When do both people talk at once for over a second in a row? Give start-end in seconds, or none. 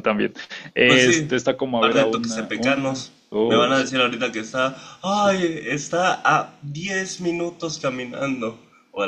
1.8-3.9